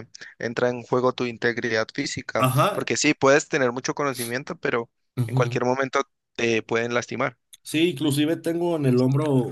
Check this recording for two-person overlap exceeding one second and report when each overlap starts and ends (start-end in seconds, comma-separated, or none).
none